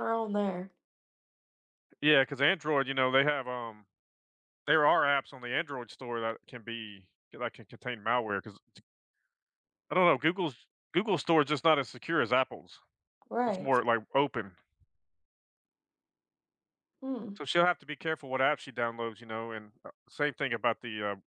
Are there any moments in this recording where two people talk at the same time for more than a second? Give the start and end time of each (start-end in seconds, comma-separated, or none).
none